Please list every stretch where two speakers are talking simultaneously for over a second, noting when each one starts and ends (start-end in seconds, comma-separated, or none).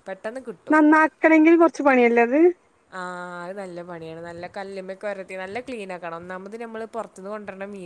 none